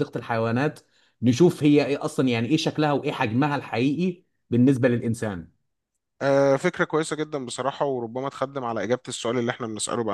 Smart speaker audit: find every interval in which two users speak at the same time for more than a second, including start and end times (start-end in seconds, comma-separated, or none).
none